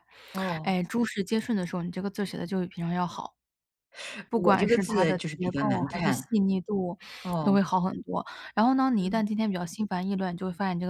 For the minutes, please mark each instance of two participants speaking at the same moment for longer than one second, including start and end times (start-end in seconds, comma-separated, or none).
4.3-6.2